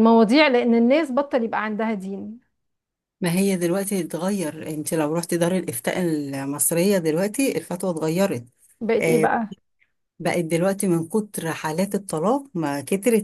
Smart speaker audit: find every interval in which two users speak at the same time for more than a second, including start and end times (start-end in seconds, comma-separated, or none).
none